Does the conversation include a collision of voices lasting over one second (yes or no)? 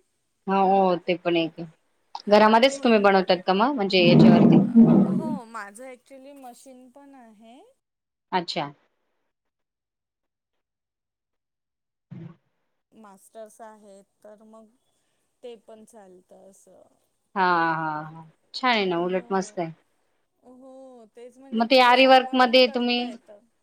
yes